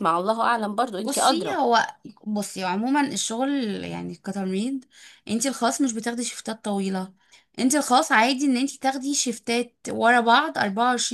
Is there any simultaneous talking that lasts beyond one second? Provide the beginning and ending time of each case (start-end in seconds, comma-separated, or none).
none